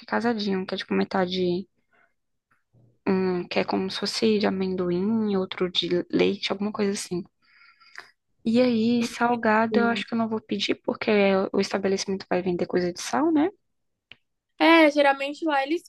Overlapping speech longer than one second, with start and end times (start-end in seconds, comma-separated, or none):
none